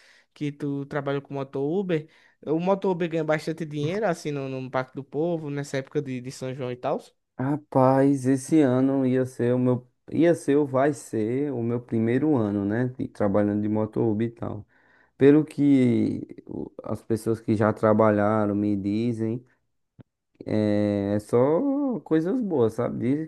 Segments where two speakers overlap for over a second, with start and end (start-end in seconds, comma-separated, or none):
none